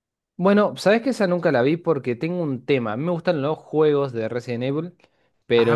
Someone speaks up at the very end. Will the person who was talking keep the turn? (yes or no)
yes